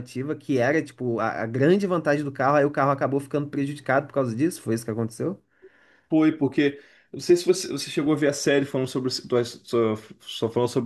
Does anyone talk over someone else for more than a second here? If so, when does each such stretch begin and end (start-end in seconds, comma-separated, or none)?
none